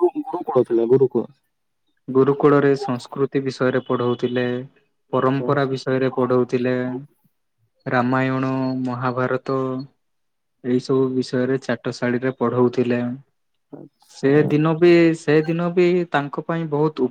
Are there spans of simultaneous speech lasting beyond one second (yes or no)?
yes